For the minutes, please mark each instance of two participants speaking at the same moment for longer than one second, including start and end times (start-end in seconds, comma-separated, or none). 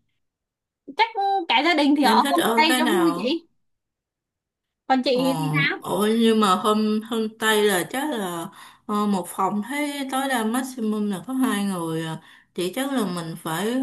2.0-3.4